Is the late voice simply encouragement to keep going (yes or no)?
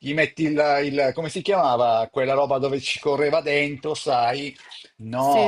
yes